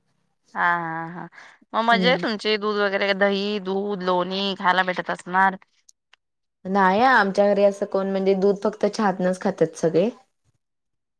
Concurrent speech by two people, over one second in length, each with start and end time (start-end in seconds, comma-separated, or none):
none